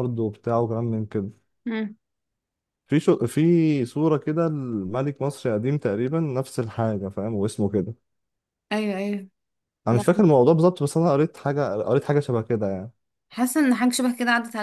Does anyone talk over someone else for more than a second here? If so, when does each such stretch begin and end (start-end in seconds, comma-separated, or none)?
none